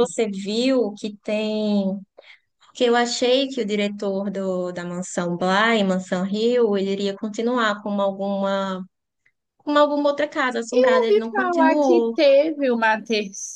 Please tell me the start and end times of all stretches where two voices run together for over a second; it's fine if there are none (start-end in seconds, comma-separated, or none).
10.7-12.2